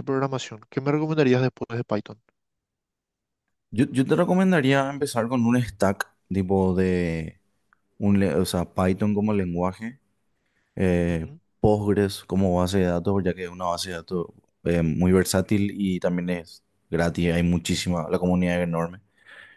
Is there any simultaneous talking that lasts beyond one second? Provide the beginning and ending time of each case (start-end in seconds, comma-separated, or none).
none